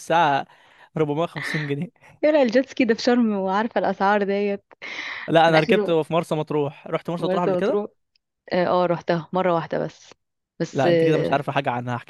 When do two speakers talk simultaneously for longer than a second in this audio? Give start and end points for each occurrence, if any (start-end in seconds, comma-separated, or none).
none